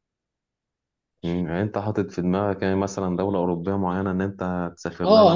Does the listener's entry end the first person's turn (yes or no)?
yes